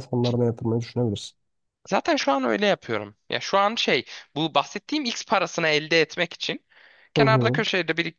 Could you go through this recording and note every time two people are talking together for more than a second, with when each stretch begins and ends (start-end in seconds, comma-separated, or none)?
none